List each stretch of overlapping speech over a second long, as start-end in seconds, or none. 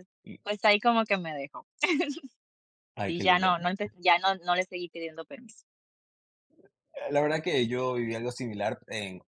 none